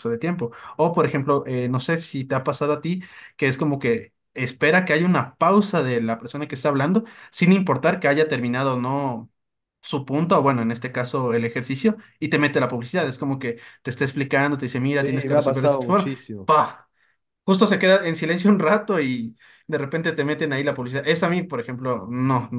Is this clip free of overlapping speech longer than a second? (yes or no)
no